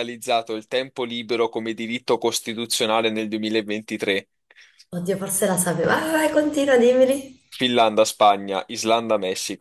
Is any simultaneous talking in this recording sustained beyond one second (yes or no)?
no